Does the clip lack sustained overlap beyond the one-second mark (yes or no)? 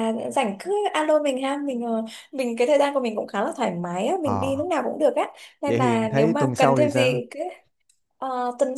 no